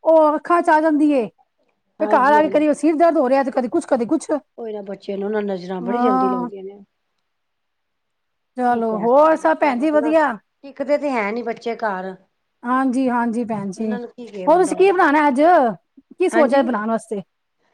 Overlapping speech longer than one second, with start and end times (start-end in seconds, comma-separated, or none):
8.7-10.1